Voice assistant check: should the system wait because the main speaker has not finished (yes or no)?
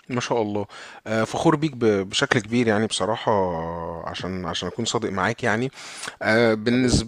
yes